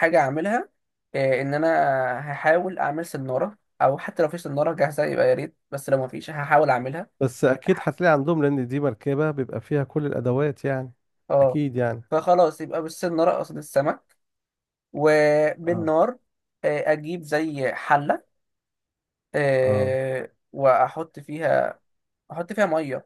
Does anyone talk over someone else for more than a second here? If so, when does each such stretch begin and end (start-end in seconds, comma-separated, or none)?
none